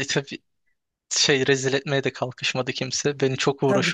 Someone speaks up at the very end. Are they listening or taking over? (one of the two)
taking over